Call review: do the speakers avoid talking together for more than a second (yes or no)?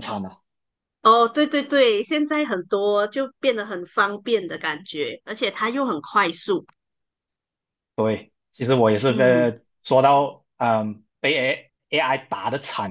yes